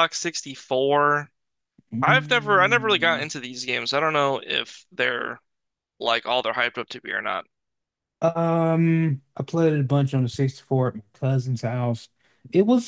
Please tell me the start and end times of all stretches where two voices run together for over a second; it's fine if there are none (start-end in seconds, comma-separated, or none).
2.0-3.2